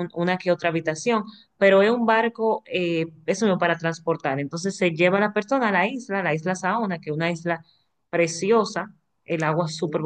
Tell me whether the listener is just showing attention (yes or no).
yes